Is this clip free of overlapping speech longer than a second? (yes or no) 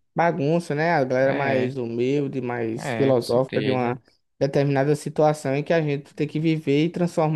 no